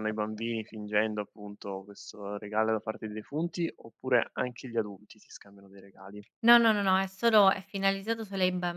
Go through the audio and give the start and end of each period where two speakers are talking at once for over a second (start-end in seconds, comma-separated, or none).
none